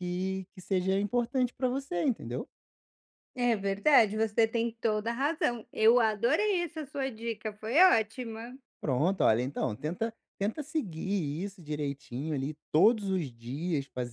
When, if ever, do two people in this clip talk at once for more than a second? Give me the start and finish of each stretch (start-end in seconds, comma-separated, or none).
none